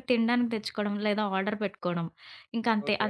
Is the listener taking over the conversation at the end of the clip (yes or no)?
no